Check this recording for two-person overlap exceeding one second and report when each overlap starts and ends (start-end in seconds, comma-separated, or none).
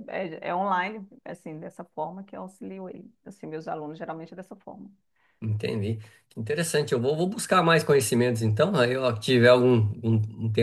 none